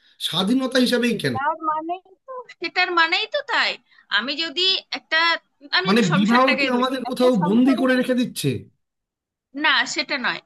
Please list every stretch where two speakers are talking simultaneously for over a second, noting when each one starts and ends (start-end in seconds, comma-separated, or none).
5.9-7.8